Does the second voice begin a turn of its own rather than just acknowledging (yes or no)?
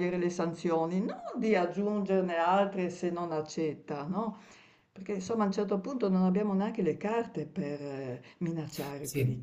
yes